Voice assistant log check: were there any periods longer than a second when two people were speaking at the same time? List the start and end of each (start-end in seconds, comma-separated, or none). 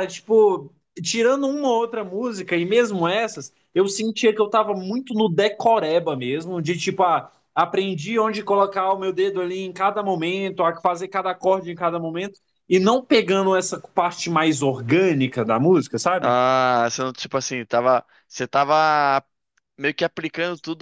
none